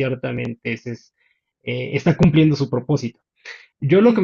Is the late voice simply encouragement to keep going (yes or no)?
yes